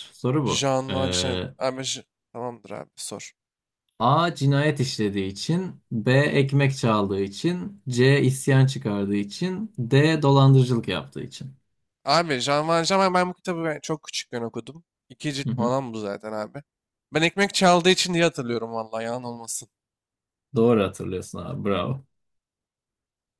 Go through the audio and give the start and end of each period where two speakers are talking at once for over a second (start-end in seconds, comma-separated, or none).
none